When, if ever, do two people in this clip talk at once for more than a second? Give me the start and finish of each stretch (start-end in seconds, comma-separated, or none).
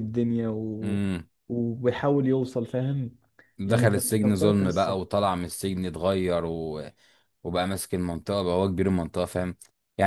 3.7-5.0